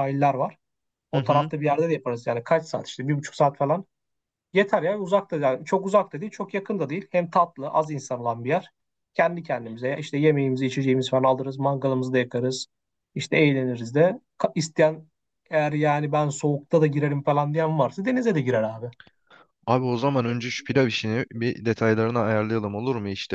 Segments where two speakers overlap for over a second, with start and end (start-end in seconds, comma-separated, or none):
none